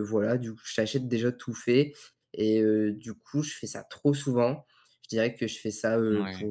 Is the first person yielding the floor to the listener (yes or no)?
no